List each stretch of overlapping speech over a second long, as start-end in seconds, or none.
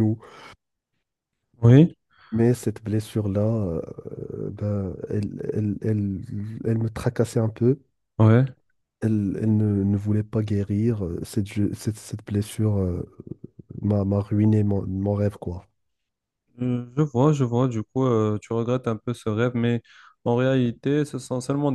none